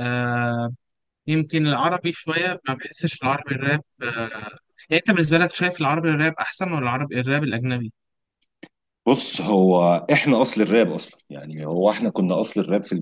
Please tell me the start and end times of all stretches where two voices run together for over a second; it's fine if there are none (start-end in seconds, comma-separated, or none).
none